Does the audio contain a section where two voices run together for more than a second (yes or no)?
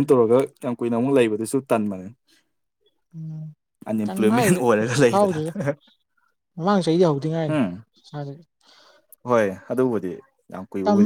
yes